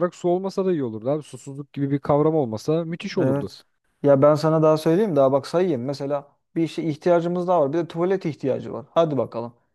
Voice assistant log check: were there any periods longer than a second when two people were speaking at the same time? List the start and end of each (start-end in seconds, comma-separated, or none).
none